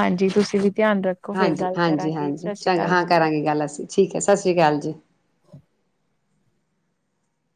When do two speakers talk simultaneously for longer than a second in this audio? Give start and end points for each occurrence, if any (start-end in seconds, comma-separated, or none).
1.4-3.2